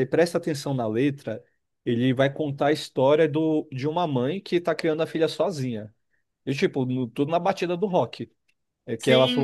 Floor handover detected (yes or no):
yes